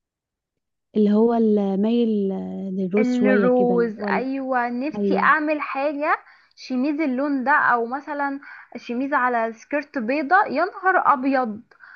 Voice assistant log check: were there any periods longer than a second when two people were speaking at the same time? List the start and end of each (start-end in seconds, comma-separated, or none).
3.0-4.3